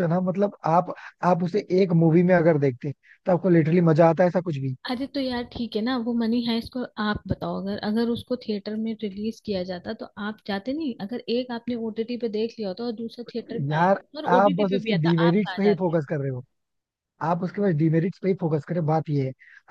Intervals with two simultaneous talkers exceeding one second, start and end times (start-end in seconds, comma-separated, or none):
13.7-15.9